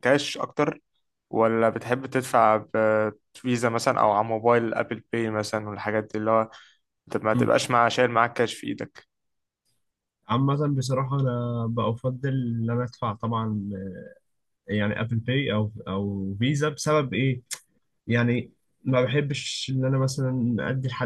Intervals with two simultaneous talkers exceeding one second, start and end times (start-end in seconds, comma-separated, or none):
none